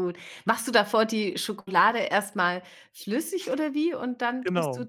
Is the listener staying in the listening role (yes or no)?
yes